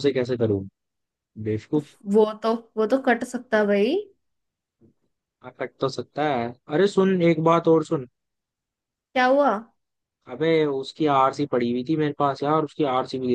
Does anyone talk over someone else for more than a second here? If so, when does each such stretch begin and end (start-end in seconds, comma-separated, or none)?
none